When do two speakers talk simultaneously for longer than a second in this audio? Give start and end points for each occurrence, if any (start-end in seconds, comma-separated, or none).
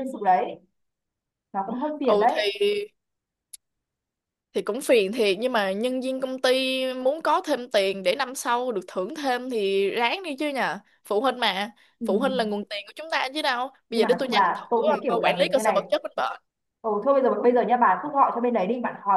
13.9-15.9